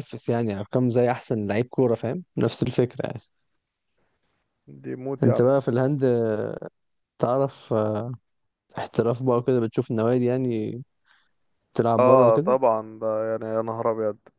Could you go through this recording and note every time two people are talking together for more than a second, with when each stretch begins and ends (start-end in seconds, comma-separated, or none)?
none